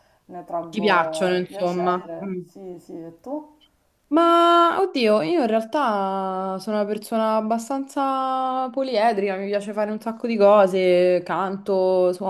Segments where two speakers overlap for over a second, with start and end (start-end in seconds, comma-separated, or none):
0.7-2.4